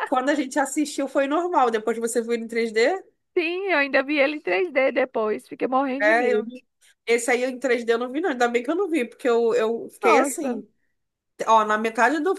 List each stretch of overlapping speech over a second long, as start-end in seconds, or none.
none